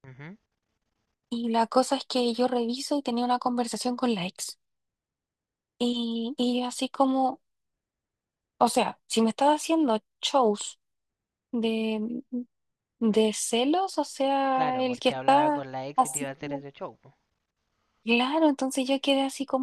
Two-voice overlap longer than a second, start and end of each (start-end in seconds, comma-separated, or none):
14.5-16.6